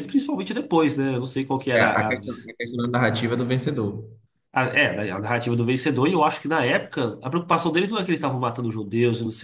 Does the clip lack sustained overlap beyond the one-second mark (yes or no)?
yes